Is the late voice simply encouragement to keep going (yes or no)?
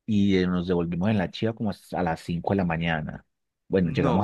yes